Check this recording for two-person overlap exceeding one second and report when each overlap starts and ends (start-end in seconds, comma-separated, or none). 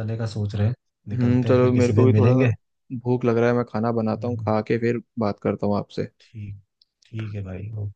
1.1-2.3